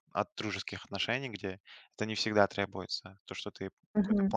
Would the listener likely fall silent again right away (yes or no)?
no